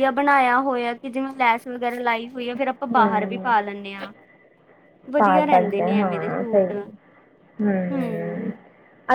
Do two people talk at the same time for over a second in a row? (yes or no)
yes